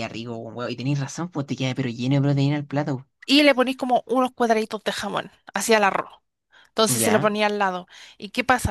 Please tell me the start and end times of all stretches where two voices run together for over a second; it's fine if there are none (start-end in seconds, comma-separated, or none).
none